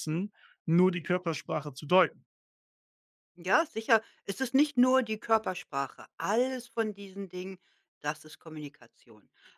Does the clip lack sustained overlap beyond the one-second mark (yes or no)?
yes